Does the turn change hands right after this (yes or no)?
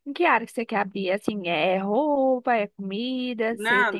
yes